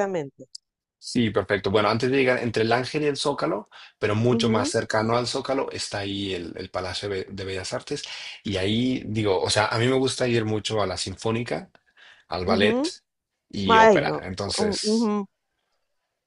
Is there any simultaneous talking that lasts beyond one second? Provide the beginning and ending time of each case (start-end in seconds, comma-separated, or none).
13.7-15.1